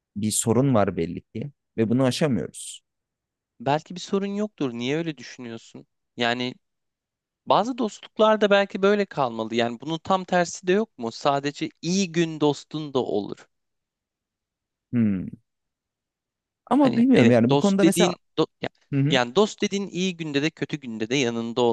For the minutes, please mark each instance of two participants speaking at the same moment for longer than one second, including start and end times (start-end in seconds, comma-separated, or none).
16.8-18.1